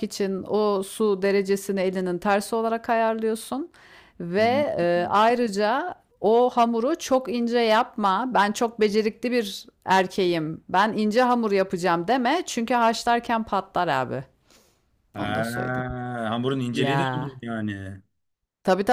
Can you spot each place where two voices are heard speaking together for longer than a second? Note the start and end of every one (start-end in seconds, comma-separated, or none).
none